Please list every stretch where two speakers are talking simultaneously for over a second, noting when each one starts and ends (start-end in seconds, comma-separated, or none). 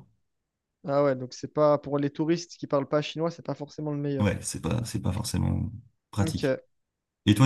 none